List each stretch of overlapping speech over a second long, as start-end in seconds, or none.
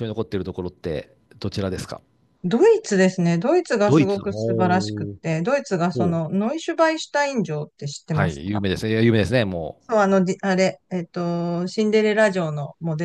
3.9-5.2